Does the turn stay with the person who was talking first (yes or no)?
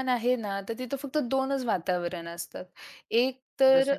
yes